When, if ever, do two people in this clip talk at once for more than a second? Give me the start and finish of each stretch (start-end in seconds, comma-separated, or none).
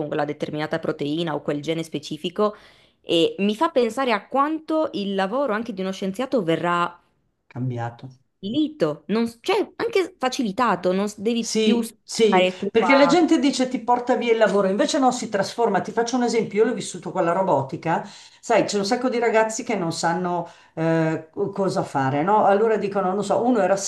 11.4-13.2